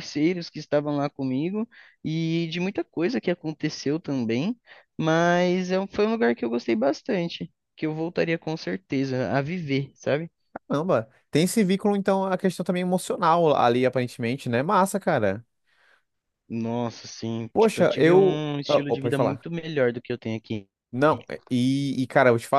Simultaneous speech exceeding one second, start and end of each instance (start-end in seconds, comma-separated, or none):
17.5-19.5